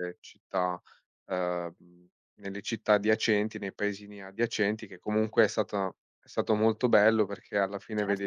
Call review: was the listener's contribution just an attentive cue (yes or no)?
yes